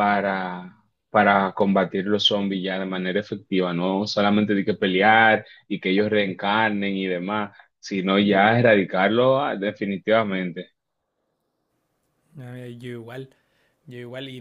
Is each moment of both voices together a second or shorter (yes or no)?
yes